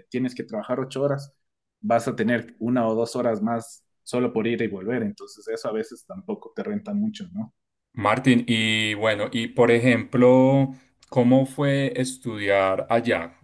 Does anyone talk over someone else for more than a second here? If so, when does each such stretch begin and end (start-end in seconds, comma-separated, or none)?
none